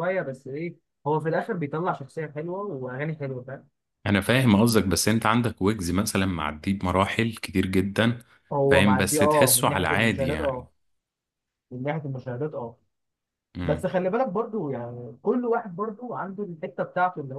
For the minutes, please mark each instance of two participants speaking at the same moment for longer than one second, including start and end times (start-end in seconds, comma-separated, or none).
8.7-10.7